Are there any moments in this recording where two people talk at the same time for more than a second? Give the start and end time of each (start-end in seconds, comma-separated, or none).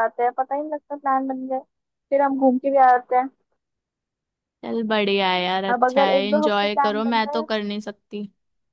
5.7-7.5